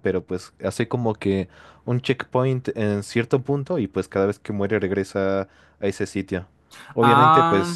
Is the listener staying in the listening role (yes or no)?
yes